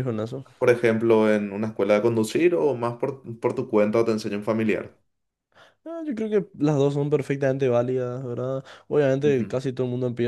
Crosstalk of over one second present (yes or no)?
no